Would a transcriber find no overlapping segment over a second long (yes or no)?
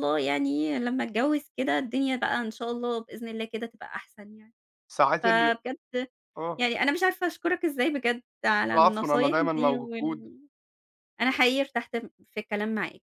no